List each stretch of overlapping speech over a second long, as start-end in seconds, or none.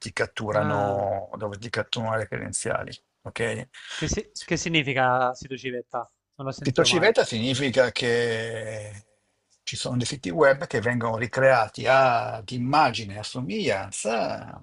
none